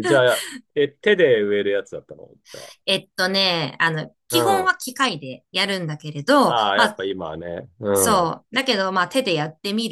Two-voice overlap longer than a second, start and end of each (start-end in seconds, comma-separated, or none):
none